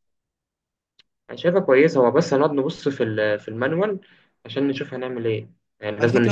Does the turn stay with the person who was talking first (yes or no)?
no